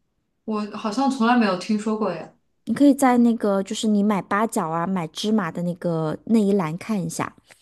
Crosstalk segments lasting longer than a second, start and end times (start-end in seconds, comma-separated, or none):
none